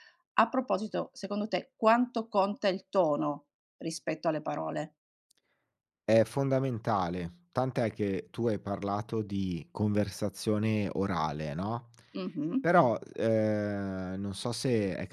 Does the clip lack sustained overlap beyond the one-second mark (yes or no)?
yes